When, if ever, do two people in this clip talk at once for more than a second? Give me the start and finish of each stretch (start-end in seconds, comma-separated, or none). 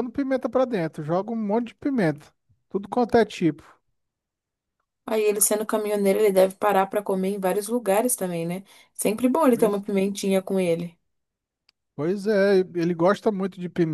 none